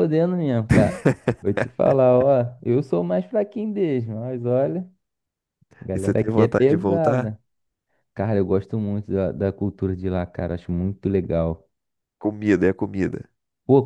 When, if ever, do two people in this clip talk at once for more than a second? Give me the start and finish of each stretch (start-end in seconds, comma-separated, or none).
5.9-7.3